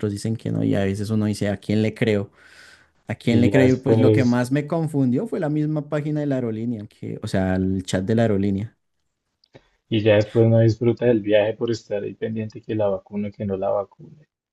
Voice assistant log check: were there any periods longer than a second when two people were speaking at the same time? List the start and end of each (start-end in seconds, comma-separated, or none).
3.2-4.4